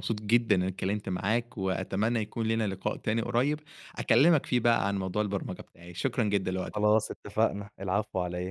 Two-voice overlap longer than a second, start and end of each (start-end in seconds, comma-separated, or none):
none